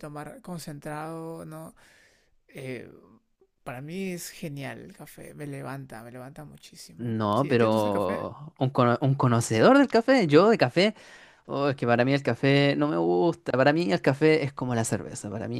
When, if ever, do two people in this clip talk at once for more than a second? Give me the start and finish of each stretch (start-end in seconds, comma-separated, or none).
7.0-8.2